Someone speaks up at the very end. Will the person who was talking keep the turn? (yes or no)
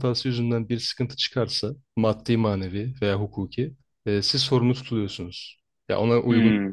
yes